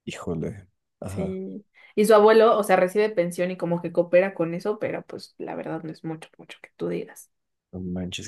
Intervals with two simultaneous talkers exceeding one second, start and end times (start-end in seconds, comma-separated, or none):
none